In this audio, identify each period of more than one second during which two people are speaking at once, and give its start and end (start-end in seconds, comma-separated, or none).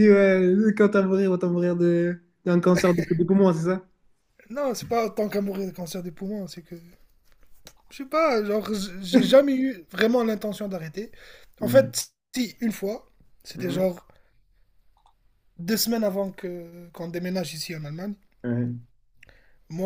none